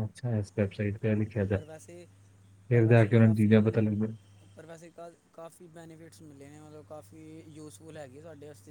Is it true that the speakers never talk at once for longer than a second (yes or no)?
yes